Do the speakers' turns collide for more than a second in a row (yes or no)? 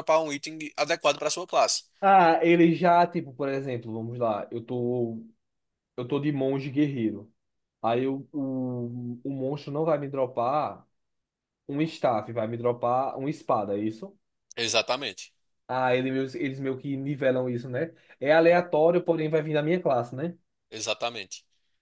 no